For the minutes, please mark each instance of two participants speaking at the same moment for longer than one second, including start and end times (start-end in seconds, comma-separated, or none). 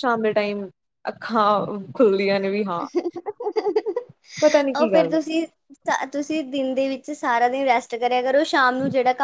none